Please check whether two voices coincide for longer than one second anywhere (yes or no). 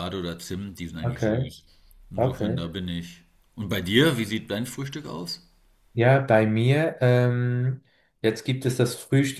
no